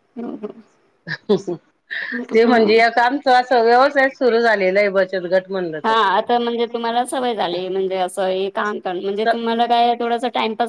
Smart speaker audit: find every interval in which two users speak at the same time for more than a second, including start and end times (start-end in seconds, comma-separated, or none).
none